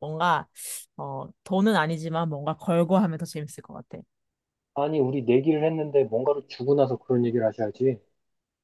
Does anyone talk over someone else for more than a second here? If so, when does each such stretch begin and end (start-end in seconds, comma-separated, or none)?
none